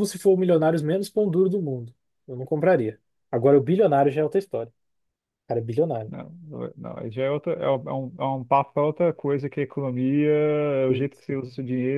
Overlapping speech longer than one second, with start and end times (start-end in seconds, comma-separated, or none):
none